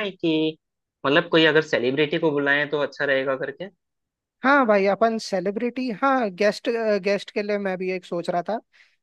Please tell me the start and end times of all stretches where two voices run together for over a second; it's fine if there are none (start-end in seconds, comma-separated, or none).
none